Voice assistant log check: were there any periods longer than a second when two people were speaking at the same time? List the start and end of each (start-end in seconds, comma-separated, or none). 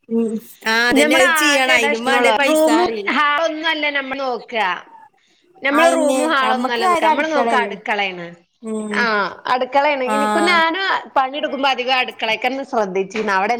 1.0-2.8, 5.8-7.7